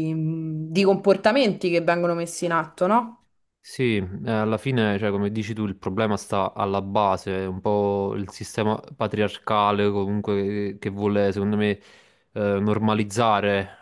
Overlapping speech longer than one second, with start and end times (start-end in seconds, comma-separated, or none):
none